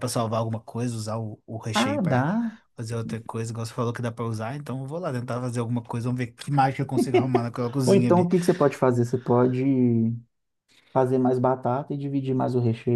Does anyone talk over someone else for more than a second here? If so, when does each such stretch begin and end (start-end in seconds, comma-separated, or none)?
none